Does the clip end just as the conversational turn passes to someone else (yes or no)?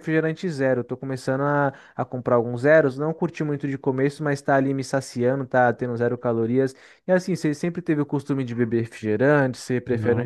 yes